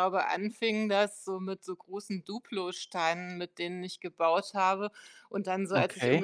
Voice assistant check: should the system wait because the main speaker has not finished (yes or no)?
yes